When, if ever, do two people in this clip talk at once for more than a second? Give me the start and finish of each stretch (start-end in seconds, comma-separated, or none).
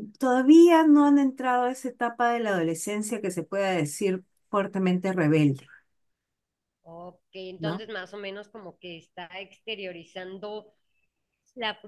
none